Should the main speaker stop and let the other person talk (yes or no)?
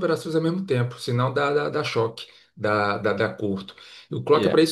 no